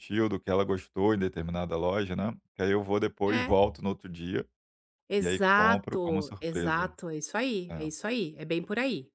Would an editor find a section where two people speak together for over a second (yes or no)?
yes